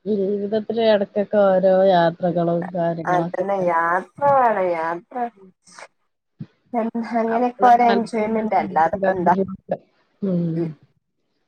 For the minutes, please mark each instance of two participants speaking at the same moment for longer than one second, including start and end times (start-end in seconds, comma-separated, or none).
7.4-9.3